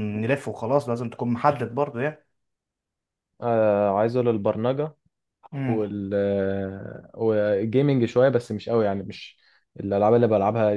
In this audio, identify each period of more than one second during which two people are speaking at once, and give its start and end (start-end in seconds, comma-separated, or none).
none